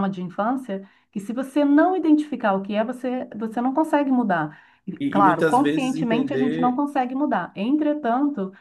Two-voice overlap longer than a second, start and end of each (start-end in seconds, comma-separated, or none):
5.0-6.8